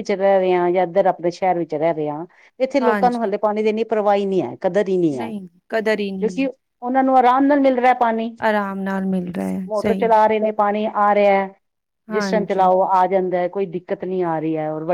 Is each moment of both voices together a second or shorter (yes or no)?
yes